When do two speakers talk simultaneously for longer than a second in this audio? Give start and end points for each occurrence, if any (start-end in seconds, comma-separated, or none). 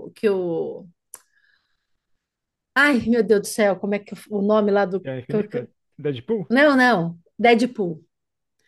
none